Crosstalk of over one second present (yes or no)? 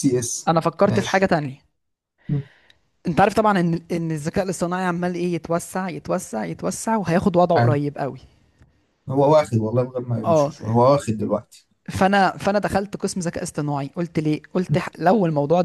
no